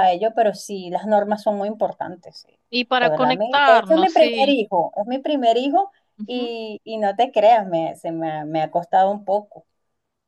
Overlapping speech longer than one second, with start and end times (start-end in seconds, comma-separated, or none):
3.0-4.5